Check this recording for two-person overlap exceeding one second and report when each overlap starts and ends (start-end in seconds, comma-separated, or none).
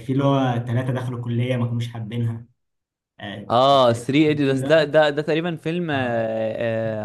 3.5-4.9